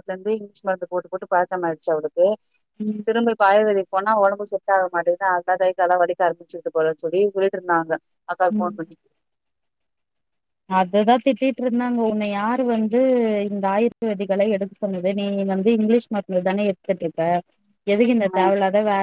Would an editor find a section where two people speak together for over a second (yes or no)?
no